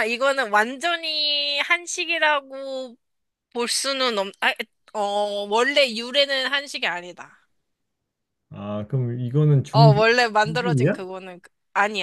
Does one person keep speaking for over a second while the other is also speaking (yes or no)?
yes